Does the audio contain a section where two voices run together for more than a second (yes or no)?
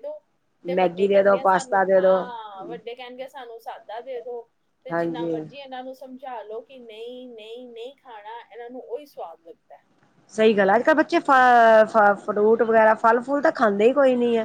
yes